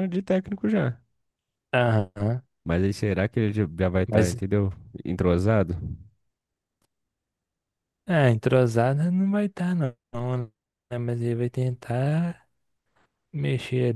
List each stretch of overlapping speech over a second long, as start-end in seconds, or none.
none